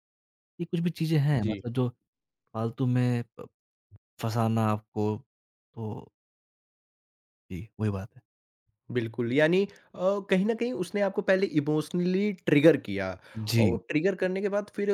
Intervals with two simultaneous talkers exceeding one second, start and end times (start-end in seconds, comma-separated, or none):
none